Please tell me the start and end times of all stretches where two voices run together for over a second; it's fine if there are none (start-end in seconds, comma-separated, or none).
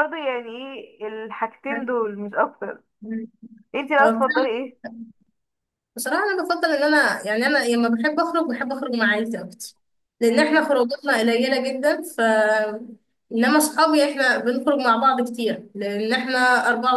none